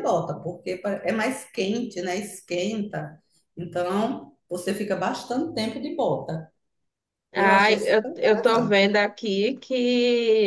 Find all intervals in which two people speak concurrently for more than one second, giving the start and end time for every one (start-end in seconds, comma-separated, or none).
7.4-8.9